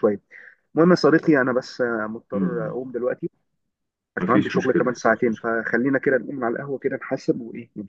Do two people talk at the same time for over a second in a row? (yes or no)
yes